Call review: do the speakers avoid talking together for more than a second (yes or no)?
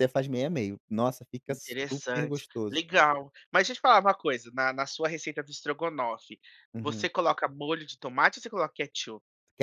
no